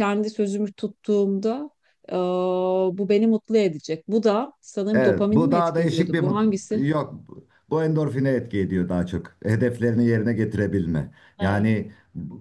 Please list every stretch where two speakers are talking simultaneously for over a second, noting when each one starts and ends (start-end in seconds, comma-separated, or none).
4.9-6.4